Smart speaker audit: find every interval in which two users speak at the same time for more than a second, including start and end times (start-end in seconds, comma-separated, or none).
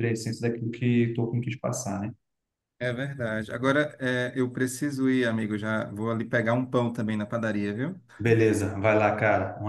none